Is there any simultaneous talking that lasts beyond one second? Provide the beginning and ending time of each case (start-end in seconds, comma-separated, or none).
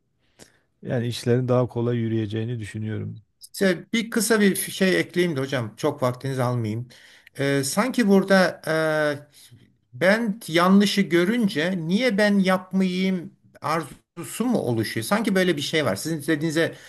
none